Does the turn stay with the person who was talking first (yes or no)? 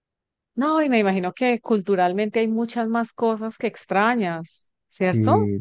no